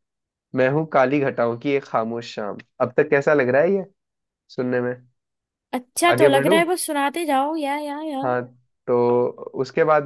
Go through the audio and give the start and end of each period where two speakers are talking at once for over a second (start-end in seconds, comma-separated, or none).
none